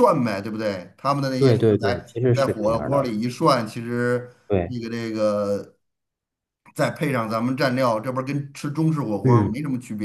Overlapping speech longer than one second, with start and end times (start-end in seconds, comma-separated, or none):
1.4-3.1